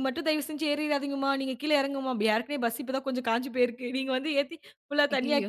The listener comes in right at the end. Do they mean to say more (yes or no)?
no